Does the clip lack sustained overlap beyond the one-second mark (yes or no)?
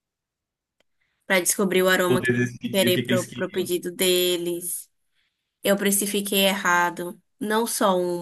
no